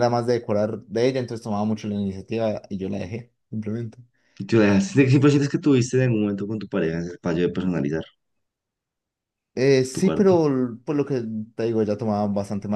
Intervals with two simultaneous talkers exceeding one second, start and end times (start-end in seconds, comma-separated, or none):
none